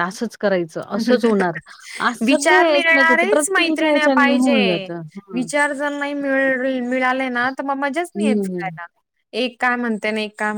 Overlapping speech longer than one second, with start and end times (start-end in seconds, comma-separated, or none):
2.3-3.7